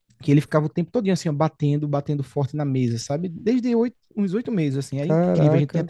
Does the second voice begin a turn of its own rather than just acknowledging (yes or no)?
no